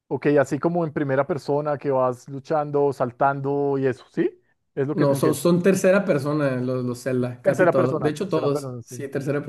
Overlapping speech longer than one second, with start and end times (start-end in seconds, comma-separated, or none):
7.4-9.0